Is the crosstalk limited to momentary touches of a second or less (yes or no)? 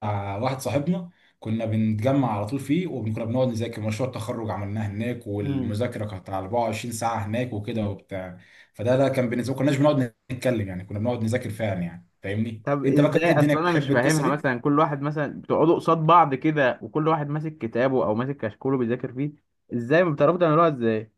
no